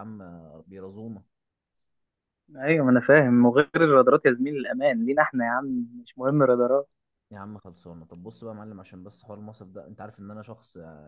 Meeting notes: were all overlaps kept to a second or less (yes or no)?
yes